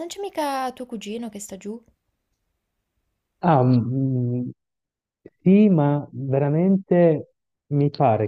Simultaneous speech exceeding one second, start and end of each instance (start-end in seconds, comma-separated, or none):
none